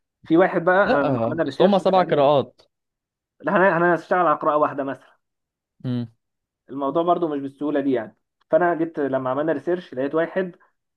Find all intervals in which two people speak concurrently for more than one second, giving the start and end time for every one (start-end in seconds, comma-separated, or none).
0.9-2.3